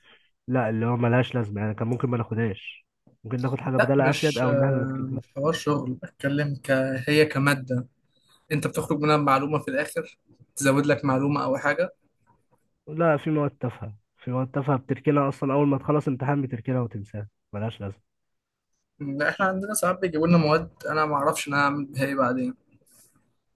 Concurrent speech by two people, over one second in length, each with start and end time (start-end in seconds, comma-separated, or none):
3.8-5.2